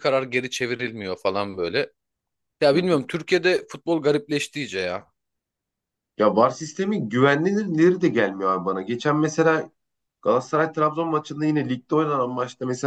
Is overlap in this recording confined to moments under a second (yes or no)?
yes